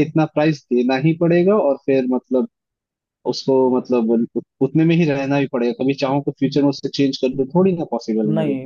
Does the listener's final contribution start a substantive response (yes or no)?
yes